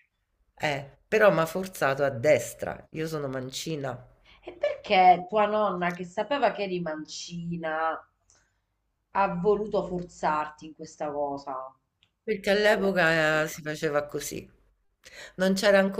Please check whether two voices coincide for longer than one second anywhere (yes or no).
no